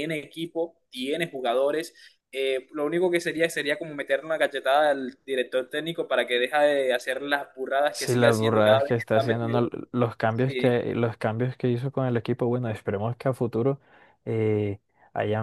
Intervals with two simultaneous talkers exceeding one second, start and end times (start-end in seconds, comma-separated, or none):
7.9-9.6